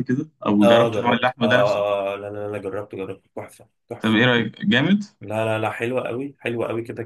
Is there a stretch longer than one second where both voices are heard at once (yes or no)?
yes